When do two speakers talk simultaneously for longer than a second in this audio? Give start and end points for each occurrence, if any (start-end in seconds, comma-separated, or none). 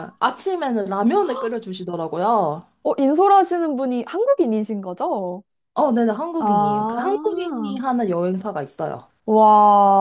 6.4-7.8